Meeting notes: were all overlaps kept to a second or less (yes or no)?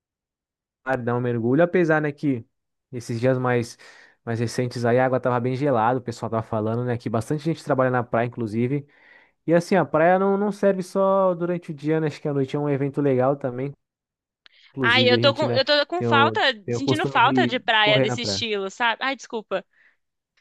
no